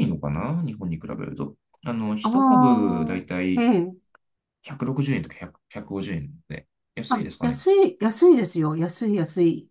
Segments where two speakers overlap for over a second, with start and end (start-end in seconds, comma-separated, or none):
2.2-3.7